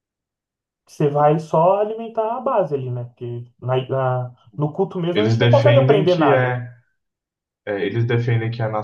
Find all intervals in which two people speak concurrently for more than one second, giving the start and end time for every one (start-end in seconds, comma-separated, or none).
5.1-6.6